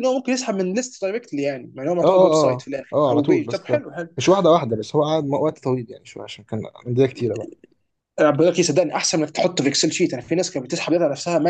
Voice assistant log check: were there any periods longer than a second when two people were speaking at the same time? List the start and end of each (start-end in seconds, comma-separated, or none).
2.0-3.7